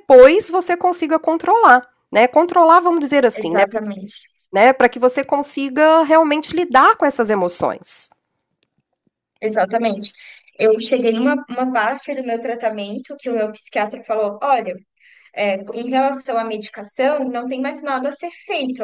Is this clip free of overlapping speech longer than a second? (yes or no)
yes